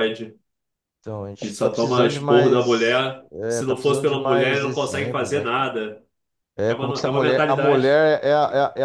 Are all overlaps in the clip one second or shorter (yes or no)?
no